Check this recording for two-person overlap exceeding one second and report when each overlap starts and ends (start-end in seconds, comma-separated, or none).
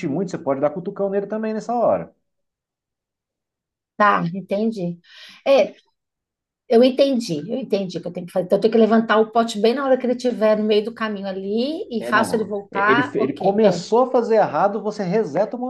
12.0-13.8